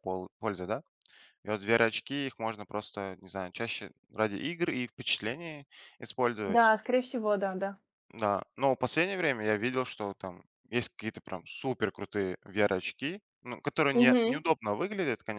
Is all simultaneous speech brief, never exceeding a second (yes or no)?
yes